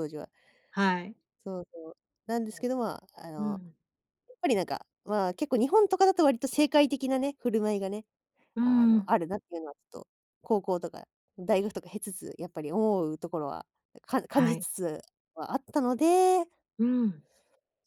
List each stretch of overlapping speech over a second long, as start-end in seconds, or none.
none